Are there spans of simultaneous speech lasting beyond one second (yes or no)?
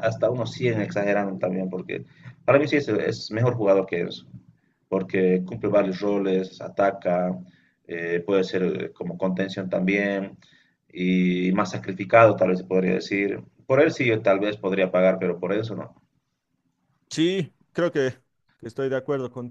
no